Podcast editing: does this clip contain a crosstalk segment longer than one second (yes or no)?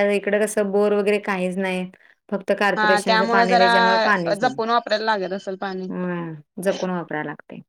yes